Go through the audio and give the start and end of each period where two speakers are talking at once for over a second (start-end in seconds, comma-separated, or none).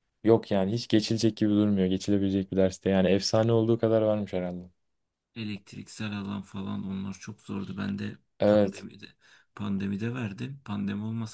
none